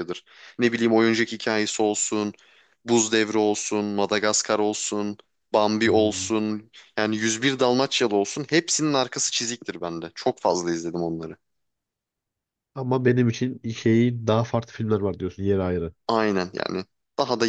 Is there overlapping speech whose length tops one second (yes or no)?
no